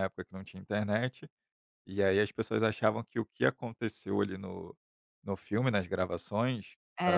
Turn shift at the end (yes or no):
no